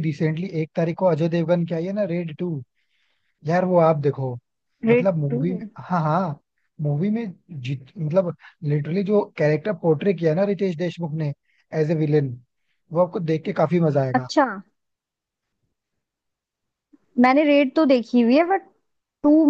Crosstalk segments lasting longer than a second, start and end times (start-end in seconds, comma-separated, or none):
none